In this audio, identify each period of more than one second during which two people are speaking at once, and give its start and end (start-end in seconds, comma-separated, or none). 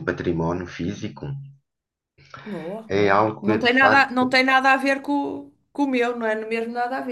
2.9-4.3